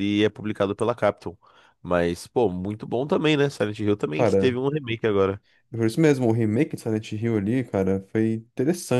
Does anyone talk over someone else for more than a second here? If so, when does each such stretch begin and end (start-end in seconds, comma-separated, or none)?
none